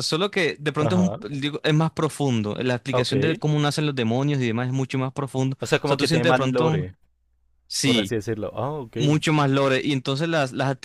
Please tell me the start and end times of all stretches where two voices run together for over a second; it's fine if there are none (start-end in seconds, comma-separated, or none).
5.6-6.9